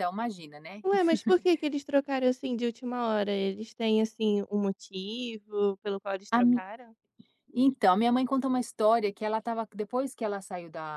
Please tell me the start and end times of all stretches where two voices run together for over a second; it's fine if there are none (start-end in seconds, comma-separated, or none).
none